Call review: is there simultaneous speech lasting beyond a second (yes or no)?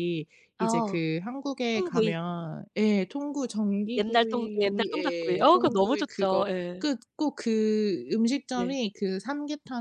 yes